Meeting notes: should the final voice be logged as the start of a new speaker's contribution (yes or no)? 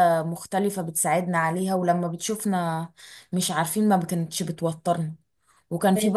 no